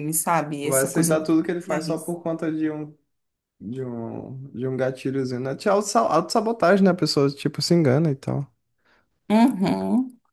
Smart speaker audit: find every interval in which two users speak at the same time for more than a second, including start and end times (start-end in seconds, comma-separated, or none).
0.6-2.2